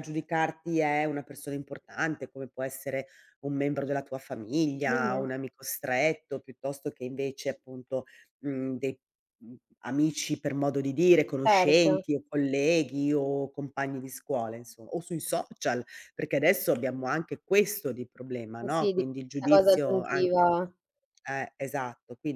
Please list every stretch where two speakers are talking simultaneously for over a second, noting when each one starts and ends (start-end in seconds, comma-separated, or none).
18.6-20.5